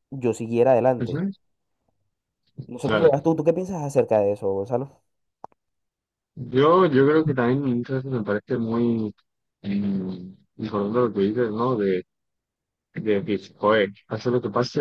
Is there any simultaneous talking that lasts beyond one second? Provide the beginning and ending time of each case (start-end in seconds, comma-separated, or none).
none